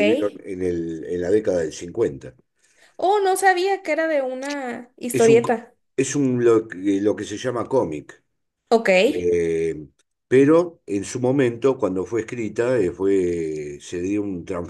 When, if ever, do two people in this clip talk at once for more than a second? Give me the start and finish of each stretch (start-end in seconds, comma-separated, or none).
none